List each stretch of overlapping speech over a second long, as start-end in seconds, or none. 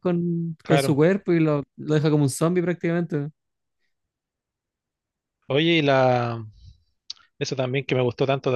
none